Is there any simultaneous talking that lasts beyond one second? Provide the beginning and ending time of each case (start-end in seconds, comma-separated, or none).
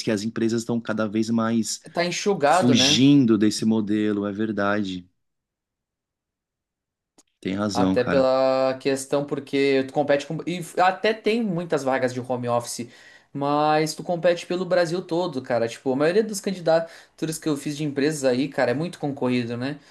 none